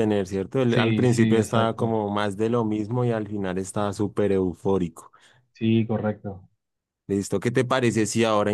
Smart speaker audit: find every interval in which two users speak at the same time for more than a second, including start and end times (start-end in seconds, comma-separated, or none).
0.7-2.0